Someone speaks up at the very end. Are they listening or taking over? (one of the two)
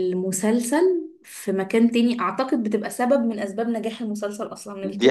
taking over